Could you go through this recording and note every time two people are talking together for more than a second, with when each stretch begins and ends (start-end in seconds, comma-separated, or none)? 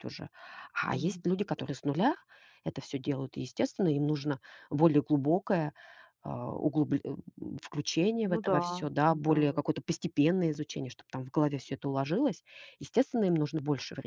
8.2-9.6